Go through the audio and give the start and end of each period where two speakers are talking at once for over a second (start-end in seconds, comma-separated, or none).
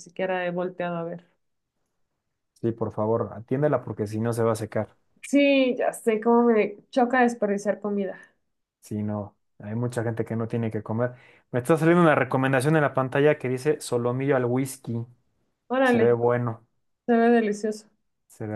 none